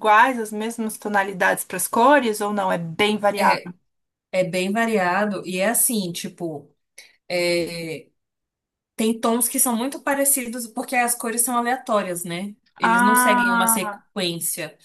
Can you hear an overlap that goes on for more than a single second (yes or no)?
yes